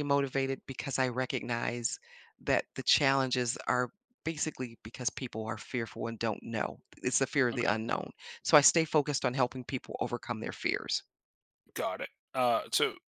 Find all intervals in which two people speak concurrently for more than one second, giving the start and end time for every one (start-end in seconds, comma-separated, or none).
none